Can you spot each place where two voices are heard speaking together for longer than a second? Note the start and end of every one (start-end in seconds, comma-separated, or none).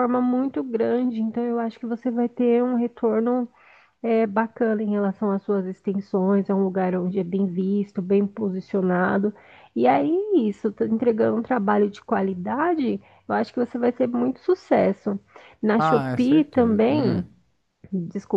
15.8-17.2